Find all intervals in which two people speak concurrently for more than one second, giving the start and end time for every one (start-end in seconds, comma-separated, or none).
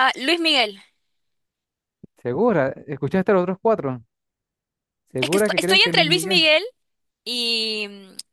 5.2-6.5